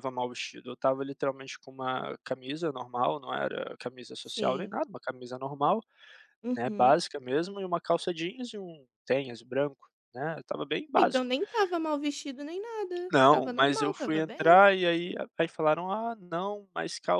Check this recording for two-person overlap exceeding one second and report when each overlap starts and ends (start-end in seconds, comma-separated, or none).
13.1-14.6